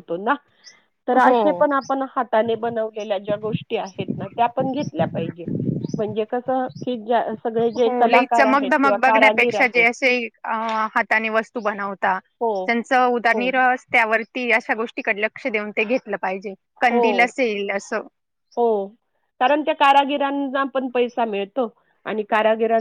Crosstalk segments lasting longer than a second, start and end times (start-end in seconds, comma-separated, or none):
7.9-9.9